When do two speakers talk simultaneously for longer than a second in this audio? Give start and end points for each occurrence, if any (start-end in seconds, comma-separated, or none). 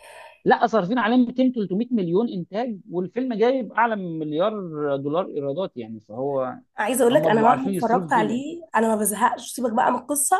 7.1-8.4